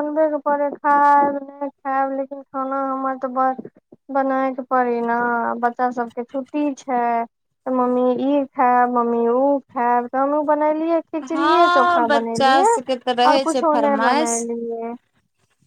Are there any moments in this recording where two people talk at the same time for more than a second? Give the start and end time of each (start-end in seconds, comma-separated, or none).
11.3-14.4